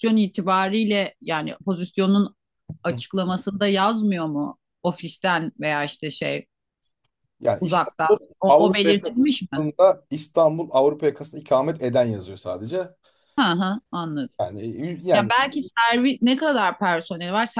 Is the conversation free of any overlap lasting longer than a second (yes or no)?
no